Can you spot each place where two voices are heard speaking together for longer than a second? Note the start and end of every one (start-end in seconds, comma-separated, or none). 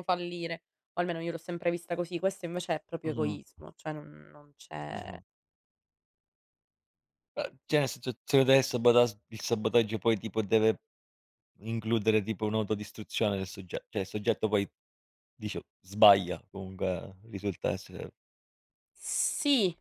none